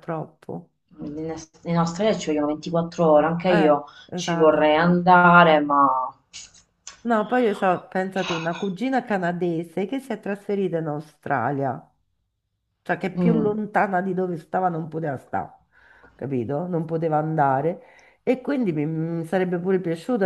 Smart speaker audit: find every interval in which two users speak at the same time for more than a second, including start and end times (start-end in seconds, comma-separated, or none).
3.5-5.0